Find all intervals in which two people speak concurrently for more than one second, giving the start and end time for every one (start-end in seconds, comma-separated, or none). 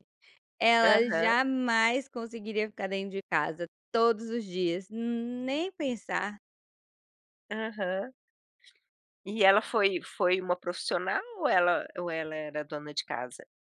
none